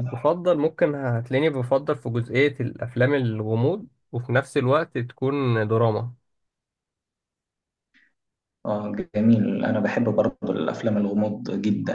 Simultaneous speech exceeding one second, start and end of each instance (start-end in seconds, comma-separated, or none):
none